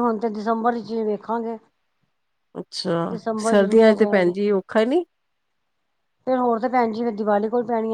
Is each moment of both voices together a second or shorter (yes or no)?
yes